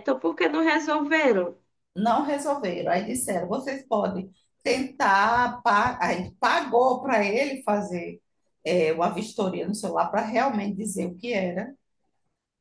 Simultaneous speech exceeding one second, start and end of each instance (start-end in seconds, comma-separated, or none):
none